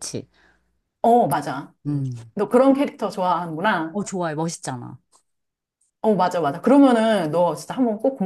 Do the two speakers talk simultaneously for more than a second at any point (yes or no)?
no